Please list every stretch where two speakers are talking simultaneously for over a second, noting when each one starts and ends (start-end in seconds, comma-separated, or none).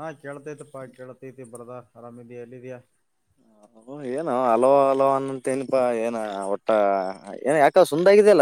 none